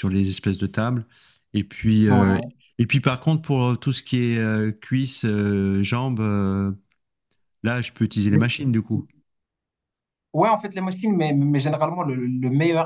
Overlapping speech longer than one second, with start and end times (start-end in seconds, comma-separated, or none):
none